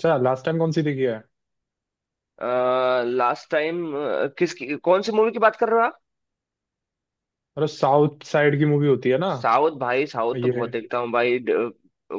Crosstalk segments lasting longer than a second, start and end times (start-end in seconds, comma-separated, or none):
none